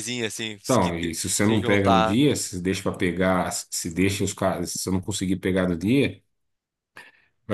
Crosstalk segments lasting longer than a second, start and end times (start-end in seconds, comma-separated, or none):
0.7-2.2